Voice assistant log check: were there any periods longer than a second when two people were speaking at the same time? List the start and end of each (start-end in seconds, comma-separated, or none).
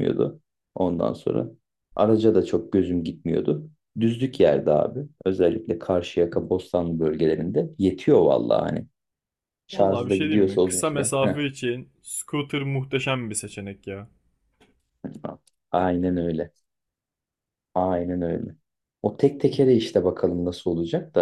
9.7-11.4